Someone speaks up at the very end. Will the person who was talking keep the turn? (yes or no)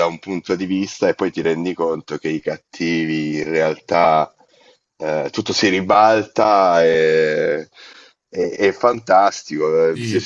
yes